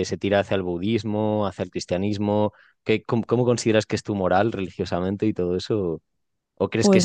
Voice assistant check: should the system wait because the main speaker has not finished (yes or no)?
yes